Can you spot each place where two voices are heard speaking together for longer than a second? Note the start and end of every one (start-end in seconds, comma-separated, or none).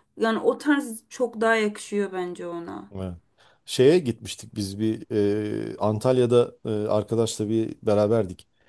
none